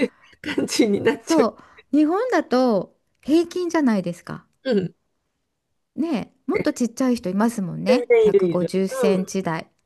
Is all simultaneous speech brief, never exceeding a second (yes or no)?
no